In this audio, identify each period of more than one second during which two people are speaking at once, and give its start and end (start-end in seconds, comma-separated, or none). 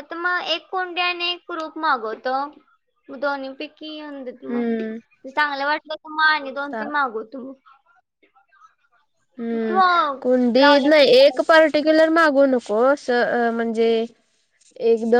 none